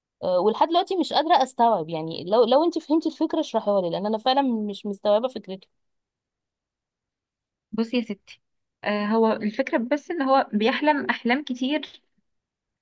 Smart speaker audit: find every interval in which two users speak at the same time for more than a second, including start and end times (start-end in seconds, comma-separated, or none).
none